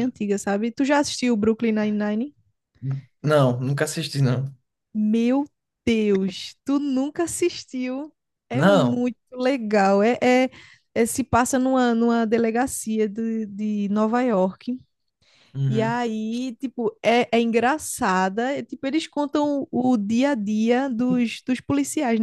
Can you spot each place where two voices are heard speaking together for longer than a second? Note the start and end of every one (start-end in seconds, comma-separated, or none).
none